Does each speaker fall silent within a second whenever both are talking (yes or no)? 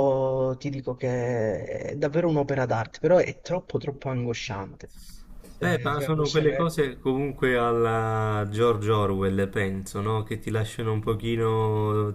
no